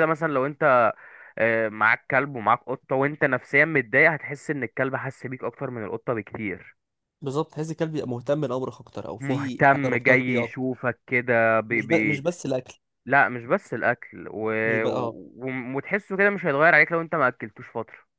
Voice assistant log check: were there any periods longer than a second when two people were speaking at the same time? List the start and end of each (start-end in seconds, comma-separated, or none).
9.2-10.7